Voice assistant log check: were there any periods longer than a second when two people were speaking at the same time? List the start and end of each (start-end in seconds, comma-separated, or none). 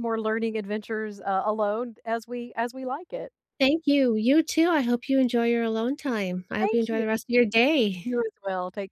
none